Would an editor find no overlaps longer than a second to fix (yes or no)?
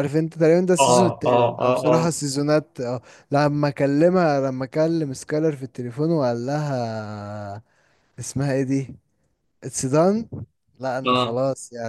no